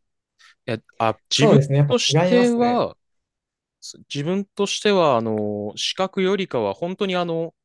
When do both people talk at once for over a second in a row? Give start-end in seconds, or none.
1.3-2.9